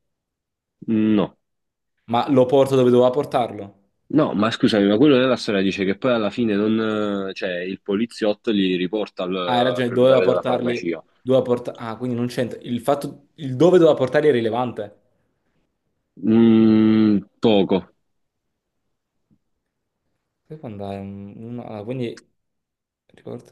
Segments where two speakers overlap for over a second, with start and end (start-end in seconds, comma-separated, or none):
9.4-11.0